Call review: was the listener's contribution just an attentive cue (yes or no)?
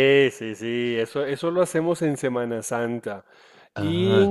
yes